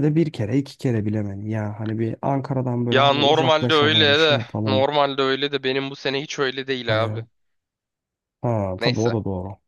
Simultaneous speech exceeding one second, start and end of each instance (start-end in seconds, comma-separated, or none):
2.9-4.8